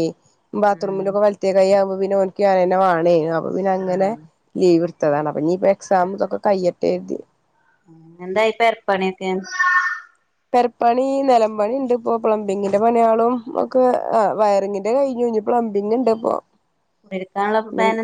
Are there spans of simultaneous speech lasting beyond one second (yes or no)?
no